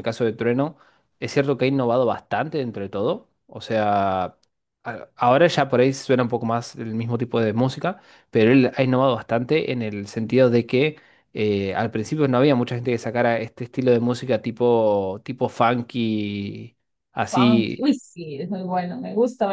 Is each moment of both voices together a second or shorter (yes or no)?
yes